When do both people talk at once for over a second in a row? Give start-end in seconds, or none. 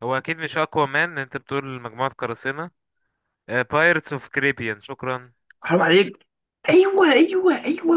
none